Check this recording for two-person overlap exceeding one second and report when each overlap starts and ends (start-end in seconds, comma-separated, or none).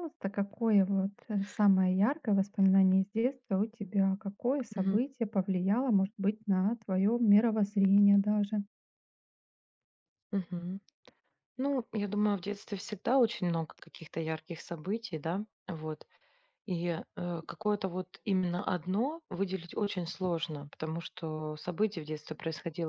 none